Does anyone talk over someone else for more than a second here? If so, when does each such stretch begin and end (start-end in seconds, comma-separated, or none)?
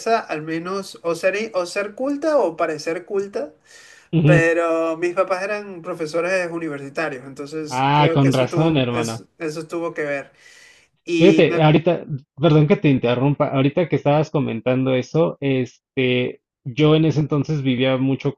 7.7-9.2